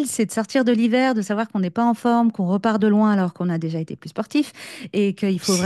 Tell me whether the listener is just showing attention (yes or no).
yes